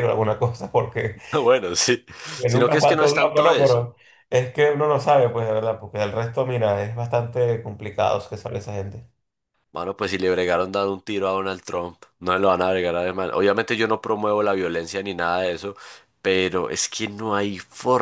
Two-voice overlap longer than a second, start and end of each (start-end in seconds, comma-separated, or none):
2.5-3.9